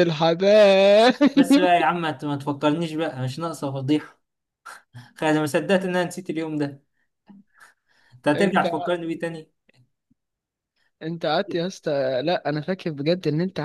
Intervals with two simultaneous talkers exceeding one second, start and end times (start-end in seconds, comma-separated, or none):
none